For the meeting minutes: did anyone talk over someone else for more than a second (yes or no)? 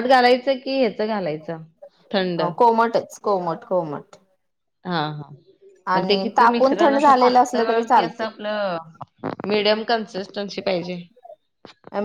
yes